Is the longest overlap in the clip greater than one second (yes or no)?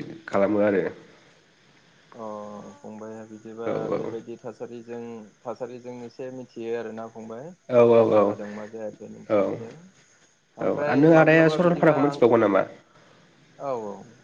yes